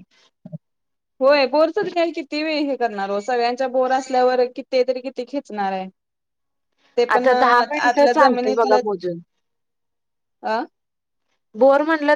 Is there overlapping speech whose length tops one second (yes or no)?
yes